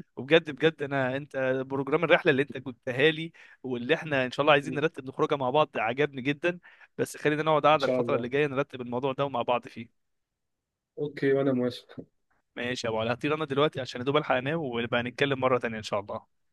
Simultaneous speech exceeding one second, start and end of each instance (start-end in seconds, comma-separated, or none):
none